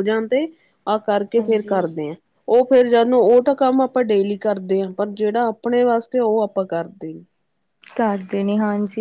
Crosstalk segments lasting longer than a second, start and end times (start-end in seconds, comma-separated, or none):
none